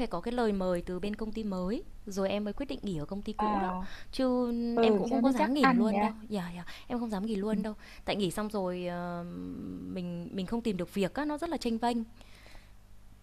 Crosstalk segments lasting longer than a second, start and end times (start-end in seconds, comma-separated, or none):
4.7-6.1